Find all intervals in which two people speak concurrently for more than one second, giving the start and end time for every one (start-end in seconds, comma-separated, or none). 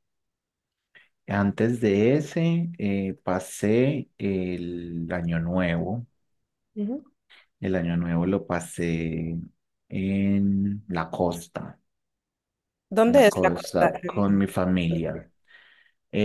13.1-14.5